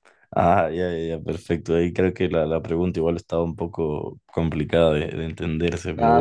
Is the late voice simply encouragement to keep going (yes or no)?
no